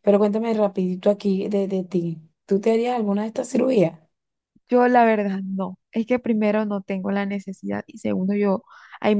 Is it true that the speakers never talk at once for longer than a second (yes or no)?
yes